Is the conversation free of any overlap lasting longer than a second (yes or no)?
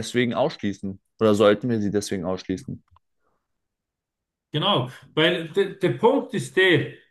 yes